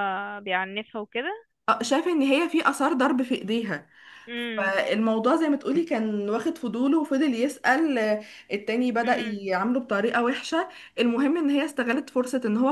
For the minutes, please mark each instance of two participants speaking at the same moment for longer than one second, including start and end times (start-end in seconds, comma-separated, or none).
none